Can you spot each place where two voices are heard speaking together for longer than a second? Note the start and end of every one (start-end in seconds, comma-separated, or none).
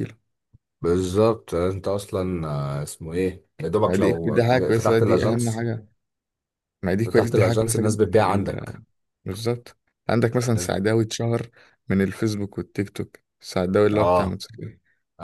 3.9-5.7, 7.0-8.8